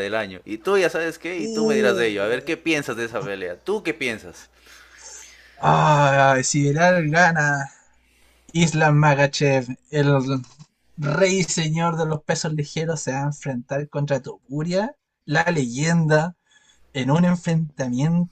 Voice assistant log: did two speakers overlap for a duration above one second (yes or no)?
yes